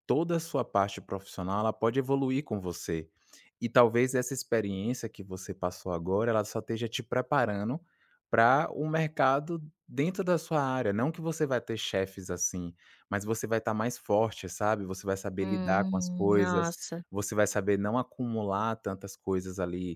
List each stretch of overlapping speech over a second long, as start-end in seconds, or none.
15.4-16.7